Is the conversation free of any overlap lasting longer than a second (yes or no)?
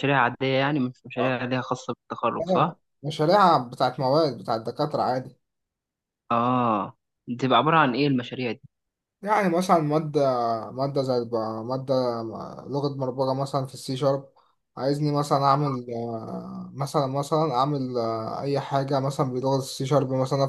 yes